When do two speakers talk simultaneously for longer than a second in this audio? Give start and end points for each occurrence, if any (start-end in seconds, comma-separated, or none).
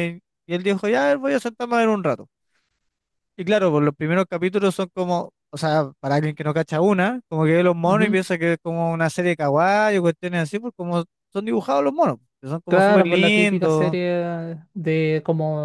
12.7-14.0